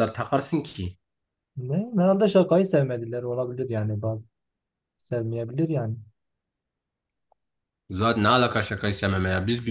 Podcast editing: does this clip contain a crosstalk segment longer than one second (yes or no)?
no